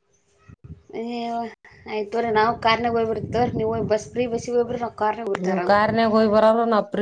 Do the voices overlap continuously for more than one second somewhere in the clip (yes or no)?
no